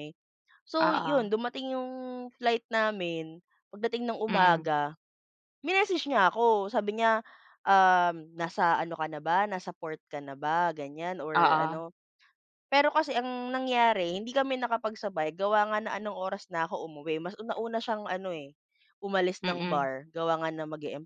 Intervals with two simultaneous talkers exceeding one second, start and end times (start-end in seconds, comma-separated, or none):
none